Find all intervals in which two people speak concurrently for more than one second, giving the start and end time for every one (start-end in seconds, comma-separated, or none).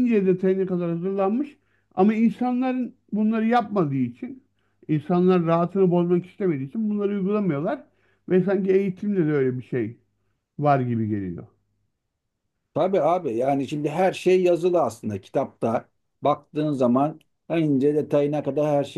none